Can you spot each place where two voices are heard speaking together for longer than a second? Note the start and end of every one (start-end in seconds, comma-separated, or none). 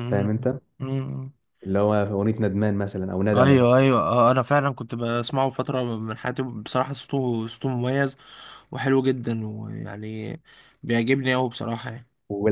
none